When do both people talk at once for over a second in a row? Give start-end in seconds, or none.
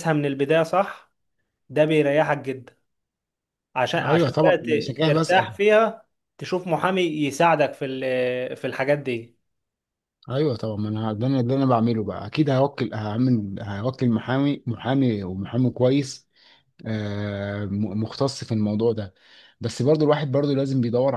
4.0-5.5